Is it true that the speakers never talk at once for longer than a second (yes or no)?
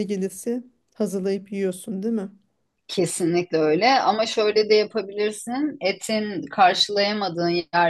yes